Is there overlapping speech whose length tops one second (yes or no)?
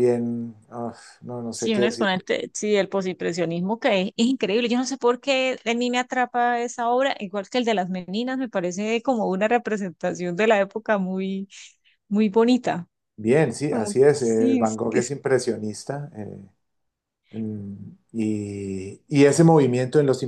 yes